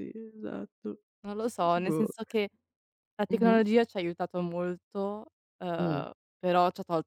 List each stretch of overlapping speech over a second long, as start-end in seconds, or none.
none